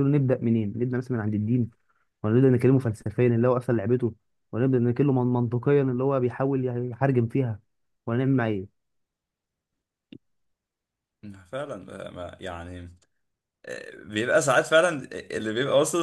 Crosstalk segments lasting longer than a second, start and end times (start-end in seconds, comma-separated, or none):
none